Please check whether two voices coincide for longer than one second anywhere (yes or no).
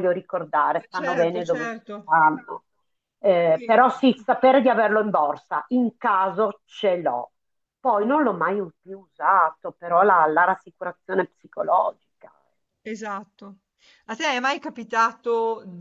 yes